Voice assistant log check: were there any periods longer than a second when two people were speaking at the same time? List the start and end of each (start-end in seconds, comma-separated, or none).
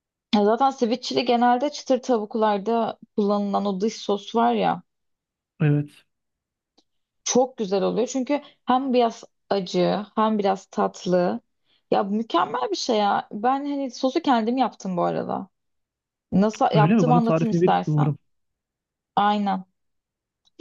16.7-18.1